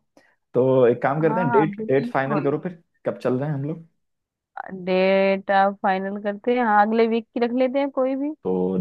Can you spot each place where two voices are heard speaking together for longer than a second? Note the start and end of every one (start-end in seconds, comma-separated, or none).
1.2-2.5